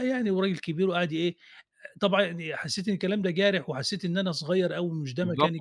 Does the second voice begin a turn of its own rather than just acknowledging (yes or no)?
yes